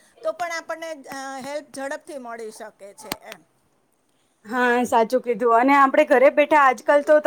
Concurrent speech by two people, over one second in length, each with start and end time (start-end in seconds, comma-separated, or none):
none